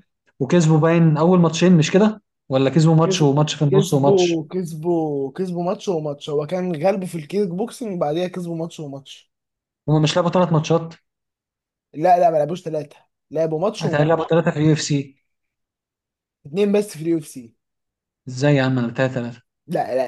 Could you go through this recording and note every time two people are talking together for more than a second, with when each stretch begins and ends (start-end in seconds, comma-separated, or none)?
3.0-4.4